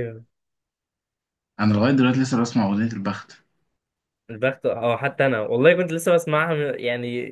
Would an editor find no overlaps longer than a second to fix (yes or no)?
yes